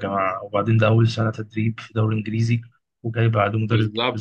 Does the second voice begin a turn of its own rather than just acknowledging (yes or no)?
yes